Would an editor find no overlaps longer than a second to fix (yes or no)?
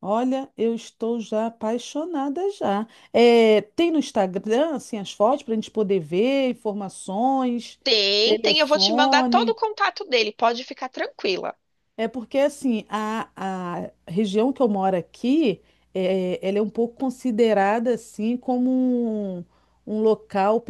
no